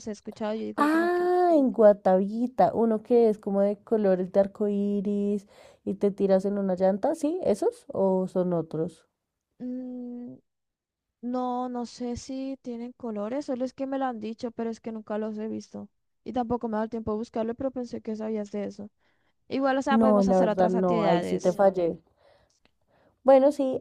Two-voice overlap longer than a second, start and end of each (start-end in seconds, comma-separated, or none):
19.9-21.6